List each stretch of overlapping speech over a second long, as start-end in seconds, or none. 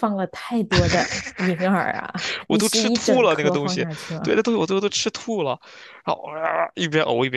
2.5-4.3